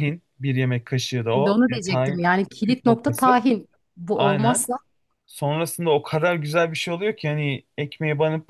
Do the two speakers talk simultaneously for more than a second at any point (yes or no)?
yes